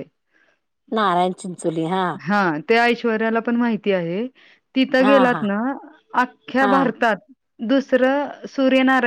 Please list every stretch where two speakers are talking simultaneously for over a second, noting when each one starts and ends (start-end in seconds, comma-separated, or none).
none